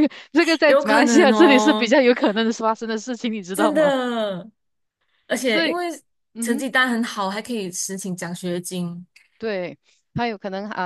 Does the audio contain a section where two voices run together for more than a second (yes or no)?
yes